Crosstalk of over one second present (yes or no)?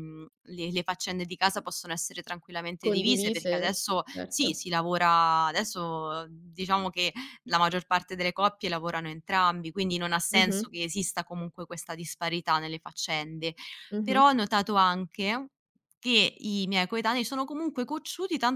yes